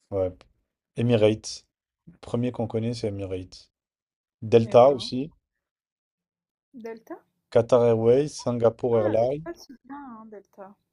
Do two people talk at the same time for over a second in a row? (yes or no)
no